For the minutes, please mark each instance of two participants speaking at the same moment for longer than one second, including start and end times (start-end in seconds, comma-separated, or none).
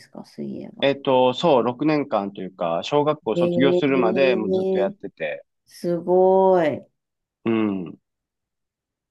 none